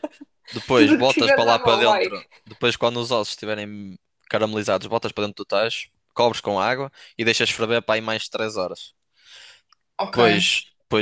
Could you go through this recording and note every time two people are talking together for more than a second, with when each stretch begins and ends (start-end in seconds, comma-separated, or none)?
0.7-2.1